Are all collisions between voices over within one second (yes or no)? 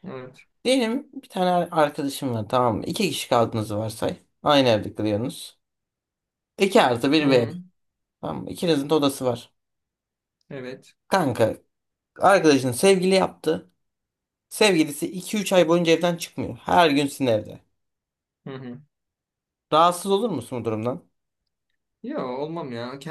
yes